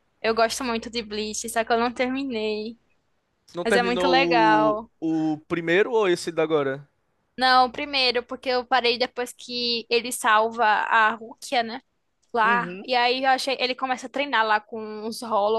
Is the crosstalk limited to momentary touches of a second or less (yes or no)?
no